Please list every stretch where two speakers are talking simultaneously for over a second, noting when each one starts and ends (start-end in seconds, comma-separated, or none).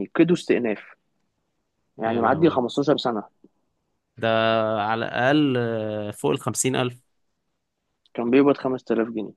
none